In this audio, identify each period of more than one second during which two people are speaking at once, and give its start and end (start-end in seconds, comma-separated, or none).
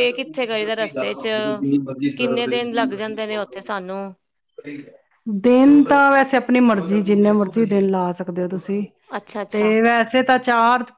none